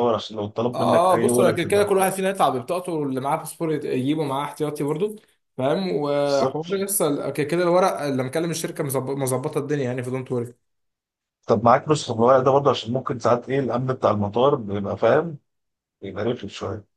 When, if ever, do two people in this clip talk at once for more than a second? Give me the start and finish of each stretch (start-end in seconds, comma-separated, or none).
0.7-2.2